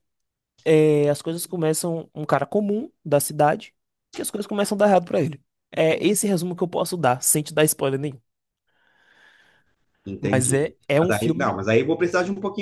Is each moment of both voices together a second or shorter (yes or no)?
no